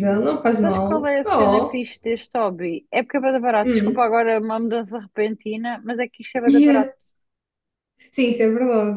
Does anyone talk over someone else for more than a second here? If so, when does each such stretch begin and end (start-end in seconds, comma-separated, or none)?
0.6-1.8